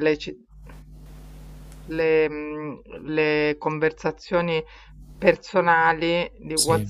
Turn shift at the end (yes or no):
no